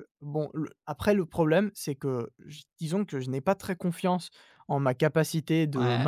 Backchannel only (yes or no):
yes